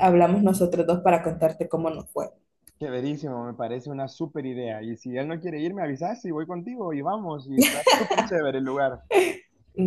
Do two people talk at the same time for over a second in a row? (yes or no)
no